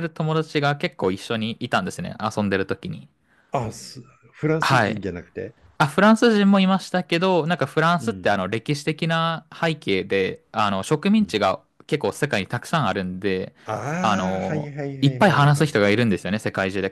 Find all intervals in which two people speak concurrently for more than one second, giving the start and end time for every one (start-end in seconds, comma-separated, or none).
14.0-15.7